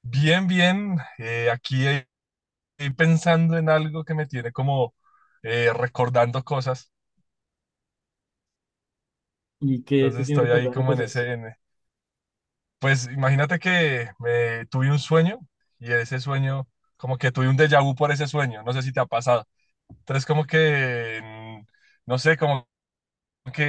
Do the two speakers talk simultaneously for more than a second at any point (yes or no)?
yes